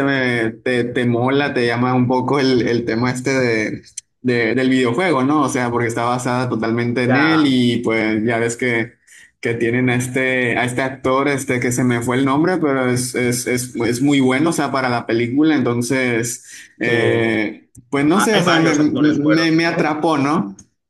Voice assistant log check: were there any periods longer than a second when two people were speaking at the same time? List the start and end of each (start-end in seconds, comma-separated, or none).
18.1-19.9